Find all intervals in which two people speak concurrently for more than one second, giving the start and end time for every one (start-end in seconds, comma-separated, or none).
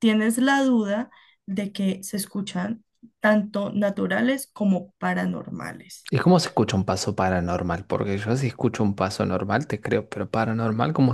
none